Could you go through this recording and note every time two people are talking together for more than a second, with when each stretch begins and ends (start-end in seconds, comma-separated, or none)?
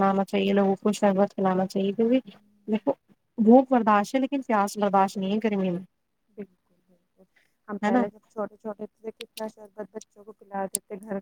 none